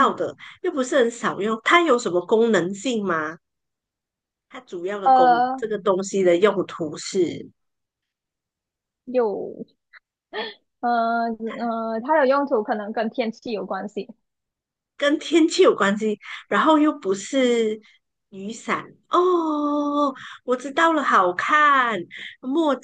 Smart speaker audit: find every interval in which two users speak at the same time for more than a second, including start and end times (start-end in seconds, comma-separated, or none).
none